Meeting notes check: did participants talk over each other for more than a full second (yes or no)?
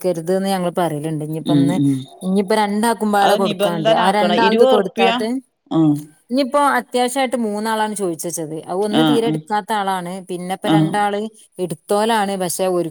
yes